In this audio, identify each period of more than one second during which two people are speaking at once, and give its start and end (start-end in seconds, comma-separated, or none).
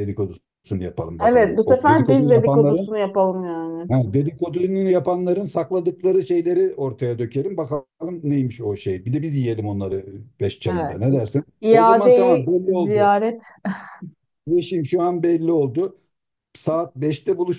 1.3-2.9, 10.7-13.1